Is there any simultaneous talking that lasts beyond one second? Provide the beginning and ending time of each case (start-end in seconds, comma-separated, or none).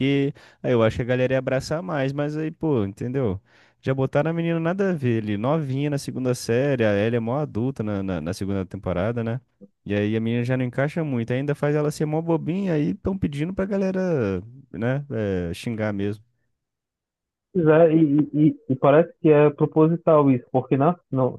none